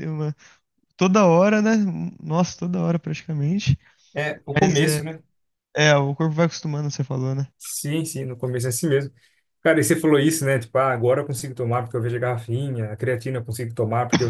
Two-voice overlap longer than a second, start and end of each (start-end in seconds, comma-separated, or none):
none